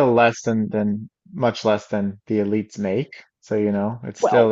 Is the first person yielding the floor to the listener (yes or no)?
no